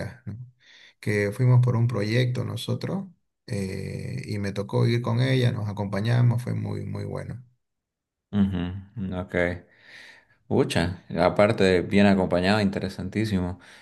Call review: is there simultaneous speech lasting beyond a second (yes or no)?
no